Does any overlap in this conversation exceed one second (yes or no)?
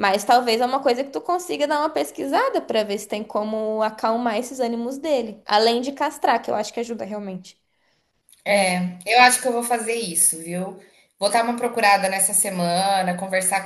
no